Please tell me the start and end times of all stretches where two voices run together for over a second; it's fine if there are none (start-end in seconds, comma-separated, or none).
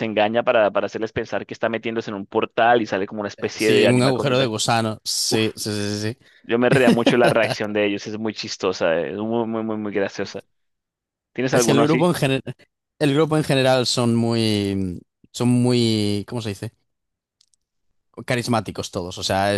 3.4-4.6